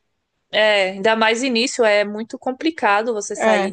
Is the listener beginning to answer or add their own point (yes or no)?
no